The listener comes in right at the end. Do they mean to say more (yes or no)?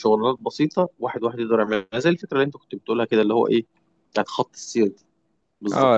yes